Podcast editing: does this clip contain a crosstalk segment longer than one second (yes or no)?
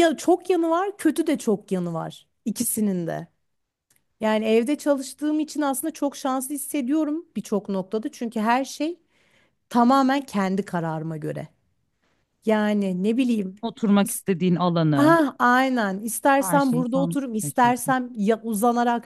yes